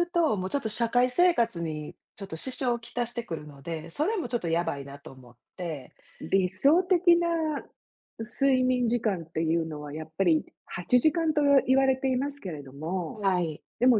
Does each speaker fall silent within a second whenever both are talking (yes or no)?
yes